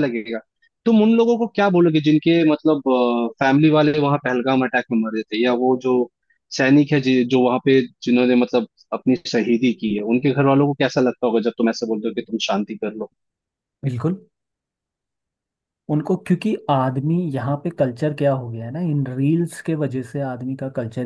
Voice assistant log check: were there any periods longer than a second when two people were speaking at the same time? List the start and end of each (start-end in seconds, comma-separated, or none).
none